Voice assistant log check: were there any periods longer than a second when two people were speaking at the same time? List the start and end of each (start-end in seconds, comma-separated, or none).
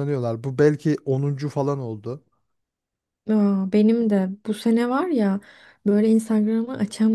none